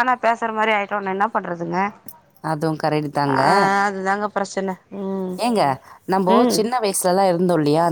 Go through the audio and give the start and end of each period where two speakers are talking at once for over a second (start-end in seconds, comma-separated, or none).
none